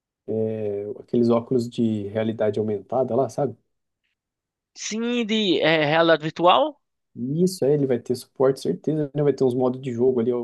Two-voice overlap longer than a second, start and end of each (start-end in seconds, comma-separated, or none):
none